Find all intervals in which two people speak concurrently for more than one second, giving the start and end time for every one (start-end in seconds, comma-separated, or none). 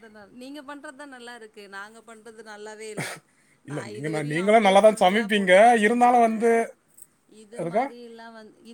3.7-6.3